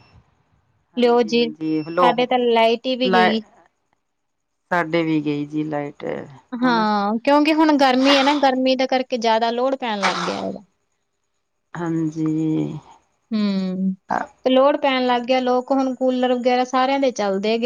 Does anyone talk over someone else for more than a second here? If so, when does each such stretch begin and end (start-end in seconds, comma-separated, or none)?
1.0-2.3